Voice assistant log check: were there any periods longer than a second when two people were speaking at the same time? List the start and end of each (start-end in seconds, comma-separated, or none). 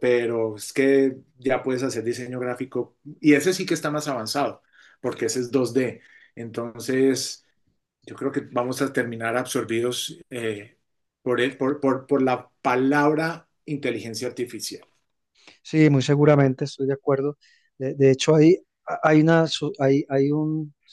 none